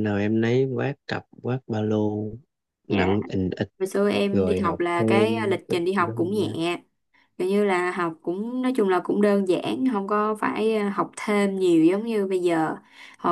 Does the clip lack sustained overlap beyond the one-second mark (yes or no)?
no